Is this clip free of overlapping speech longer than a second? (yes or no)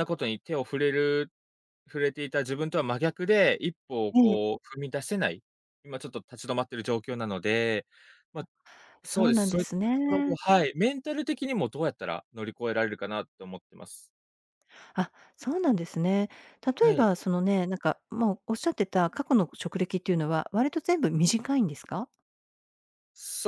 no